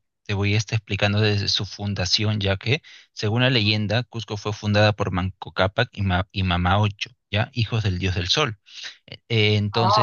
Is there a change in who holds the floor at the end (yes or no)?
no